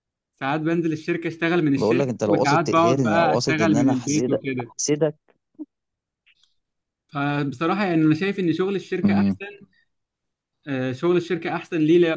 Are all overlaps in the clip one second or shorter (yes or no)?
no